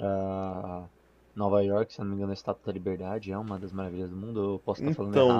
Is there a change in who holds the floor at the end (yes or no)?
yes